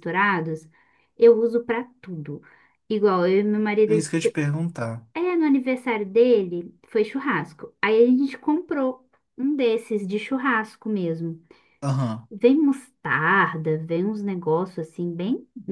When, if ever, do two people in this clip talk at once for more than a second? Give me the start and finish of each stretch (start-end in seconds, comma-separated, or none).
none